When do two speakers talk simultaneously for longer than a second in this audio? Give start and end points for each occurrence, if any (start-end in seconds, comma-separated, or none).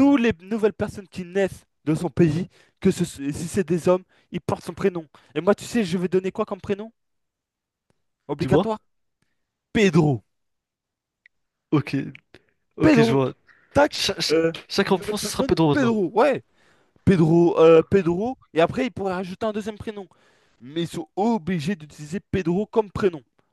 13.9-15.9